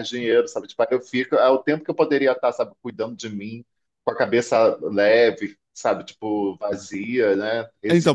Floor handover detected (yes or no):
yes